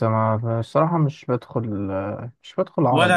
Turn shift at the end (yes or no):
yes